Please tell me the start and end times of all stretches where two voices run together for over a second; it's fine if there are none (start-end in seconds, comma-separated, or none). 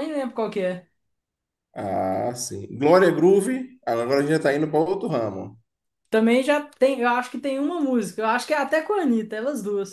none